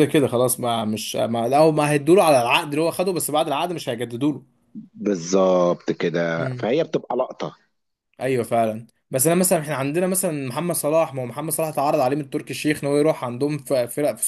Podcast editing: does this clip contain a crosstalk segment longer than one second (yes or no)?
no